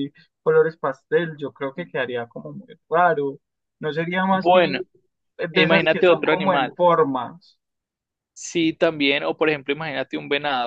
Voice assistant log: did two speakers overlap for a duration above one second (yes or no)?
yes